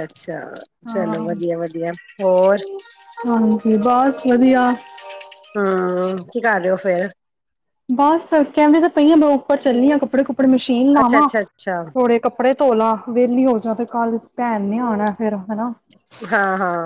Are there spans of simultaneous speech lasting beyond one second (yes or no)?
no